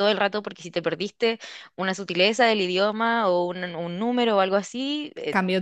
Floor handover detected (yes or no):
no